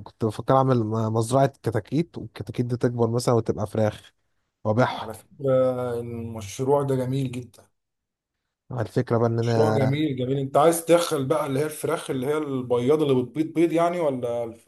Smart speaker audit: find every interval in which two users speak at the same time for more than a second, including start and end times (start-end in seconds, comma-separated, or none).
none